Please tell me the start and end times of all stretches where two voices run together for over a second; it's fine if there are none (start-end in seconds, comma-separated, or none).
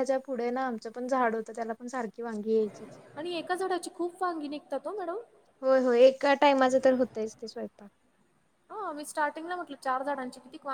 none